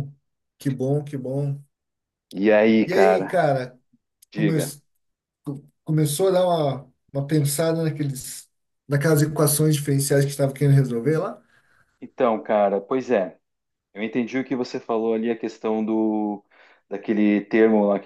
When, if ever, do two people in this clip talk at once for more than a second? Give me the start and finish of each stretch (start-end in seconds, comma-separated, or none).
none